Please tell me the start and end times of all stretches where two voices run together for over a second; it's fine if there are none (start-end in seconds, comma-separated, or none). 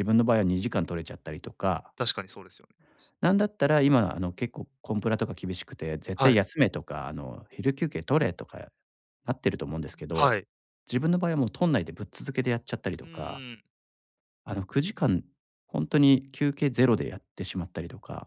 none